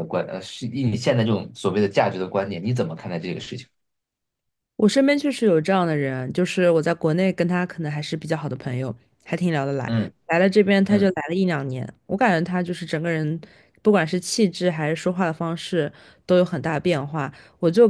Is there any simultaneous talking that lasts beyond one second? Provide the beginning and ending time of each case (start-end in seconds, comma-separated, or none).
none